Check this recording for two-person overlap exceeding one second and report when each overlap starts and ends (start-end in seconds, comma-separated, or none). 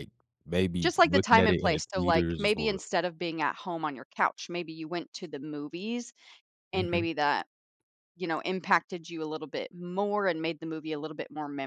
0.8-2.8